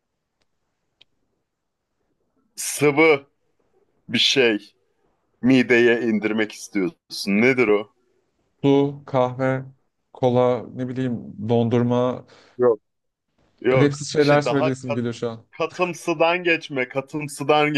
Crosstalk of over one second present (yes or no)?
yes